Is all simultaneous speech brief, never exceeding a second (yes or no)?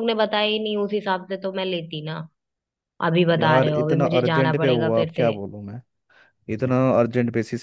no